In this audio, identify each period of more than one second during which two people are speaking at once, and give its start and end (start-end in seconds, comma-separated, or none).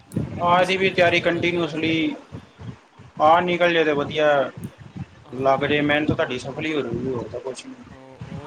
0.5-1.9